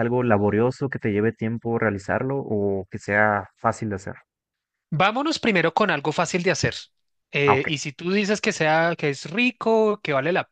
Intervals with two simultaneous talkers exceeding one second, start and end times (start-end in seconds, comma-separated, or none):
none